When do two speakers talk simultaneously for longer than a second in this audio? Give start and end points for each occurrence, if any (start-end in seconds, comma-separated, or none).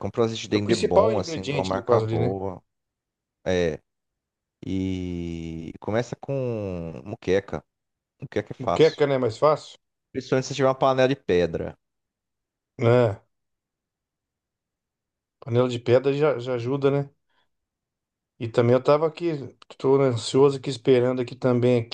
0.5-2.4